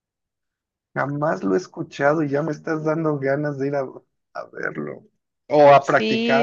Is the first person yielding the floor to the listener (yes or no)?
yes